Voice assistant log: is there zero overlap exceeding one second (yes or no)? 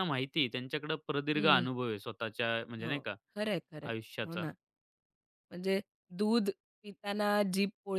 yes